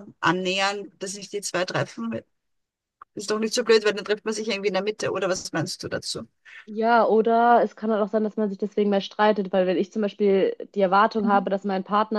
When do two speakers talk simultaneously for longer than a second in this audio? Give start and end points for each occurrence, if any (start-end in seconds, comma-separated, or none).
none